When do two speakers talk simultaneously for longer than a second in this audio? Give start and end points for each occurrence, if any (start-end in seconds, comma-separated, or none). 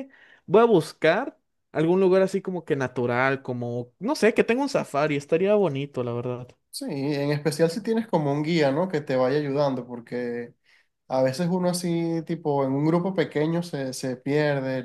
none